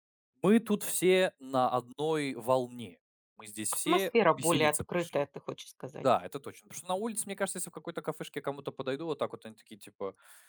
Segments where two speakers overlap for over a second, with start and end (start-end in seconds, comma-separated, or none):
3.7-5.3